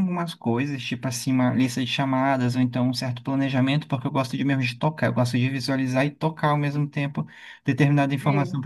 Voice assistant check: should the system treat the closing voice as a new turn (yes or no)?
no